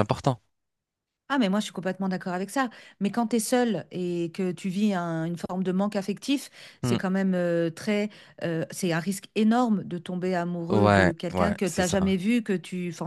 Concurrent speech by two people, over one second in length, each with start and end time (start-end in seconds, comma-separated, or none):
10.7-12.2